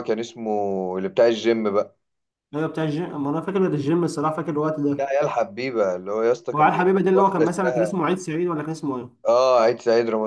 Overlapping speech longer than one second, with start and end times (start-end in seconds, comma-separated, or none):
6.5-8.0